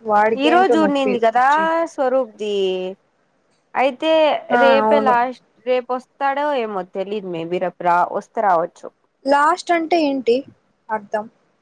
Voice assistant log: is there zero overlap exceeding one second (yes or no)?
yes